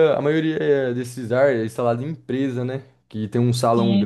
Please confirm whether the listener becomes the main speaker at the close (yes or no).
no